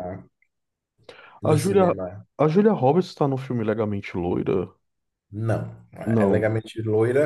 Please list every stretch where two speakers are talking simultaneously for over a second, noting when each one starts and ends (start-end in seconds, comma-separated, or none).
none